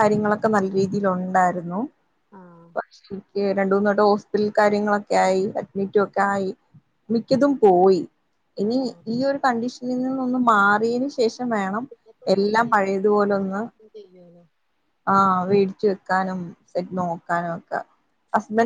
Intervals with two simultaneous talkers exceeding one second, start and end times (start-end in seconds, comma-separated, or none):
12.3-13.6